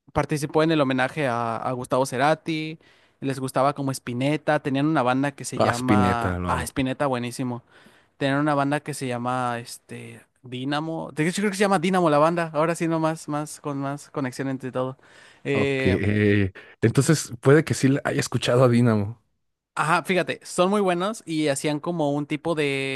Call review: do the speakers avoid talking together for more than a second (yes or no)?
no